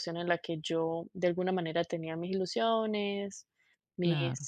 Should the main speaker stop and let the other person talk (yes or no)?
no